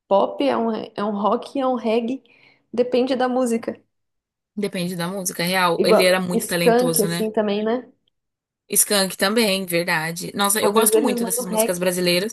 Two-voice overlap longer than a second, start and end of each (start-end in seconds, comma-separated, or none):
5.8-7.3, 10.6-11.8